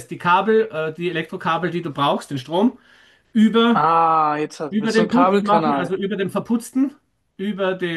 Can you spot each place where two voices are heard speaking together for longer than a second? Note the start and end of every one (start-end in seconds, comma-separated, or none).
4.7-6.0